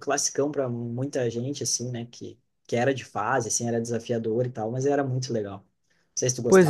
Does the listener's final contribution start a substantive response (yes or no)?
yes